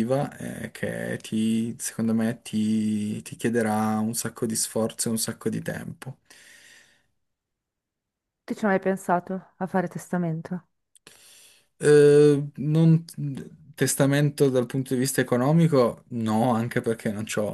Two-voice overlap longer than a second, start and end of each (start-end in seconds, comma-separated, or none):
none